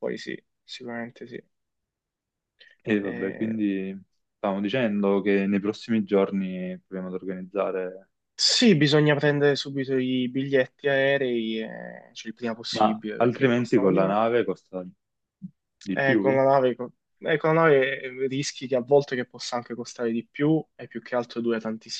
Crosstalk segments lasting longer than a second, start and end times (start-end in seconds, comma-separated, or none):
12.7-14.2